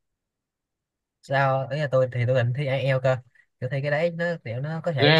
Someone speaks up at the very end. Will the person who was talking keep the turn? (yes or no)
yes